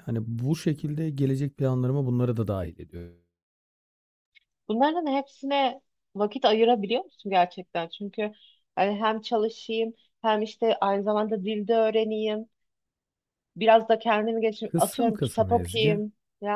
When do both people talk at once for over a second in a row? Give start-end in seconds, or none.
14.7-16.0